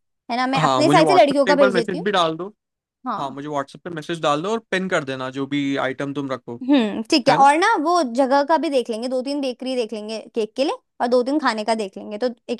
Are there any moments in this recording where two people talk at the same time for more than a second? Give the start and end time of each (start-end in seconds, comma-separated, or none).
0.6-2.1